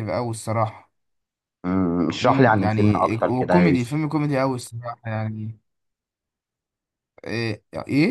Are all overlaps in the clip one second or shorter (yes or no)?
no